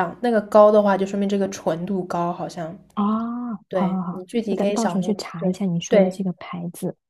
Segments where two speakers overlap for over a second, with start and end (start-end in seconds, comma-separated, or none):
3.7-6.2